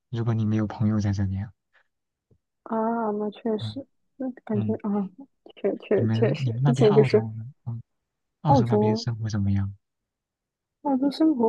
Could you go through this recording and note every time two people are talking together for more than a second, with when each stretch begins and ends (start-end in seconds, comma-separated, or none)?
6.0-7.3